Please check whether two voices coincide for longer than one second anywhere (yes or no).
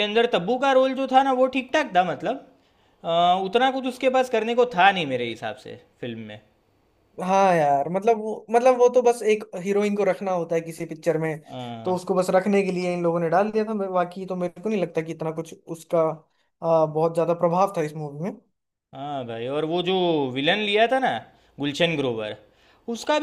no